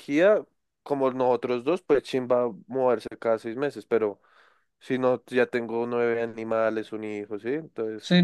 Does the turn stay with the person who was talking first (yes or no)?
no